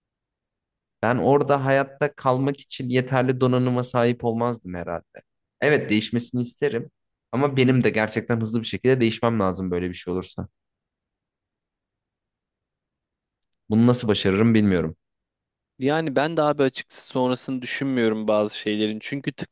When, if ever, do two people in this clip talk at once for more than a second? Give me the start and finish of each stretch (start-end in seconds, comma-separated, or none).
none